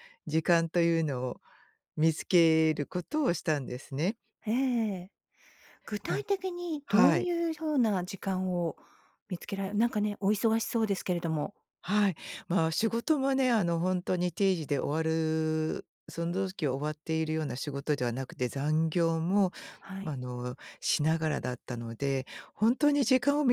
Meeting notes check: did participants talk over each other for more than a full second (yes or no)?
no